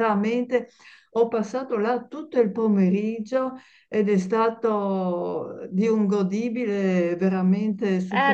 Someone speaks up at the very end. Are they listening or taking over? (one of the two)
taking over